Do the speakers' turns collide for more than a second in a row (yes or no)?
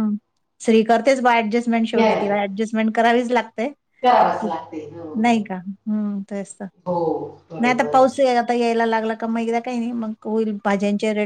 no